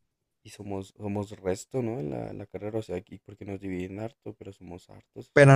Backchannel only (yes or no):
no